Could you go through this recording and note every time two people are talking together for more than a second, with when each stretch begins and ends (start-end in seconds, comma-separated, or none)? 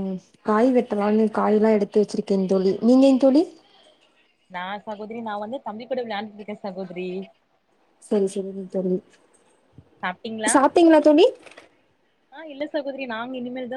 none